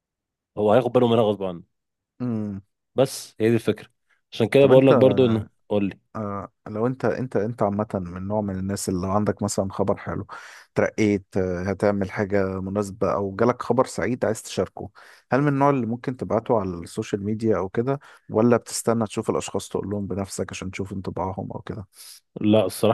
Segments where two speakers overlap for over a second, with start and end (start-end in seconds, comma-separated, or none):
none